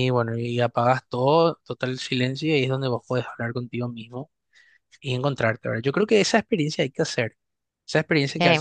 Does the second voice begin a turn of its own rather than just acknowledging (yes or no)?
no